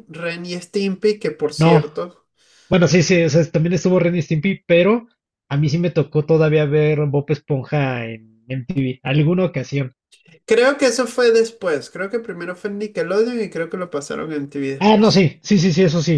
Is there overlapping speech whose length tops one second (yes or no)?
no